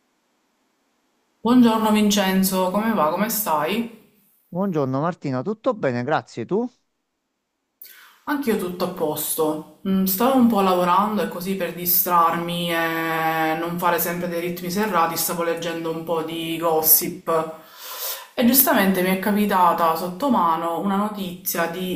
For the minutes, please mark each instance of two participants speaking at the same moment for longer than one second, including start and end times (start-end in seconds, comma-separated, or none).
none